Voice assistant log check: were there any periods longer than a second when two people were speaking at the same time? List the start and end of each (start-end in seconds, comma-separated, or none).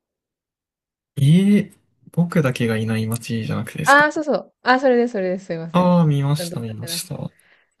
5.7-7.0